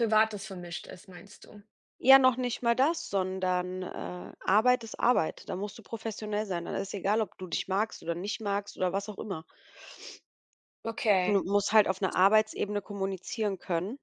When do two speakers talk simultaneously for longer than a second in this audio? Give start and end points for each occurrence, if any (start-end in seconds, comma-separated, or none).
none